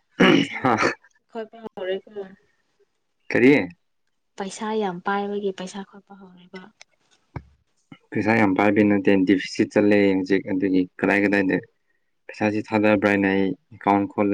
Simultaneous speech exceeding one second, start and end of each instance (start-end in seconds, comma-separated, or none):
none